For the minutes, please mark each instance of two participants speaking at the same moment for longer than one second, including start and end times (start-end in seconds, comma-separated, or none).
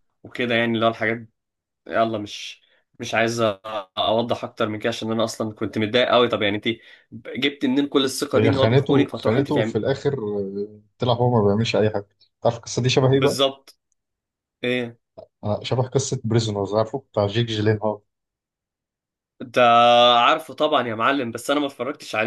8.3-9.8